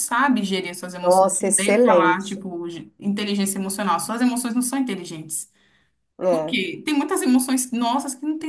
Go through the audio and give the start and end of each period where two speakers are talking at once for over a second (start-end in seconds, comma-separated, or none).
1.0-2.4